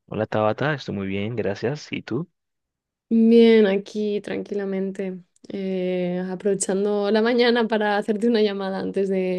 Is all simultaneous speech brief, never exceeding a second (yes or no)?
yes